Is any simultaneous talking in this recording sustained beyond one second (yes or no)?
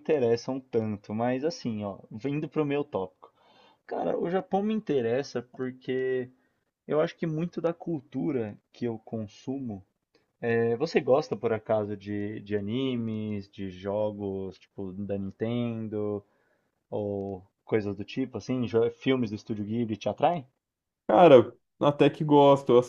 no